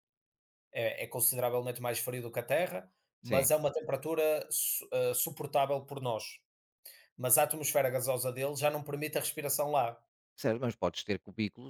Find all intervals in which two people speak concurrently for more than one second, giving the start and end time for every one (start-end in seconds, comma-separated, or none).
none